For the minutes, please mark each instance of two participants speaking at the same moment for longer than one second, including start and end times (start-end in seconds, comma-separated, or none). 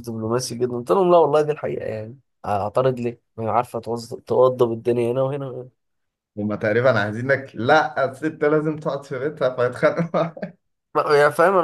none